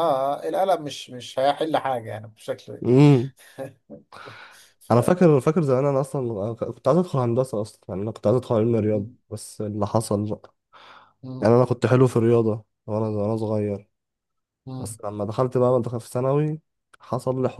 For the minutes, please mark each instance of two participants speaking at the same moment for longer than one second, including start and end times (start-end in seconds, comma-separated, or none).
none